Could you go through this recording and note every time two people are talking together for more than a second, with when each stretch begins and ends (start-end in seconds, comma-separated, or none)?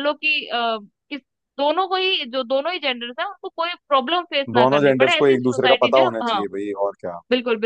4.5-6.4